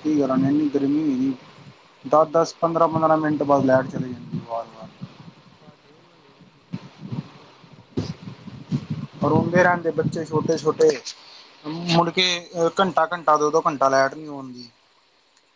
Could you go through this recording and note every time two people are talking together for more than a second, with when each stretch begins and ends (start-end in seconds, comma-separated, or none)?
none